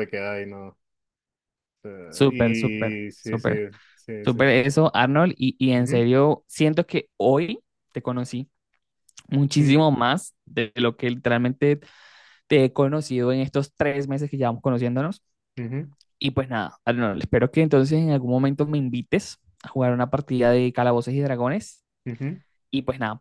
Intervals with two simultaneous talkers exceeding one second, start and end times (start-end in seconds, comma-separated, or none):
2.1-3.5